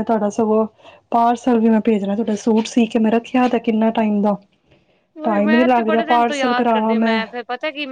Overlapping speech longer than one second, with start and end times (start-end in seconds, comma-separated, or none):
5.2-7.0